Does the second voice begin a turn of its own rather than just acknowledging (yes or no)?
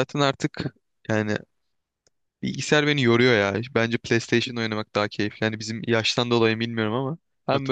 no